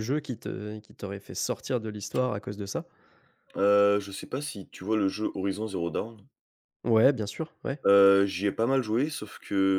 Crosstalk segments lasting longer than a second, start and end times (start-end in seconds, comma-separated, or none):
none